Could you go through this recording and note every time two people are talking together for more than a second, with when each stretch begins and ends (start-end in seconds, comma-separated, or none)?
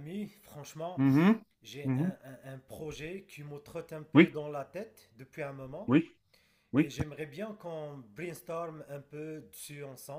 none